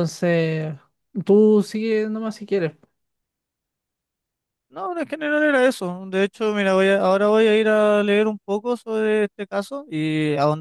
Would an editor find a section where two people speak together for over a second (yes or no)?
no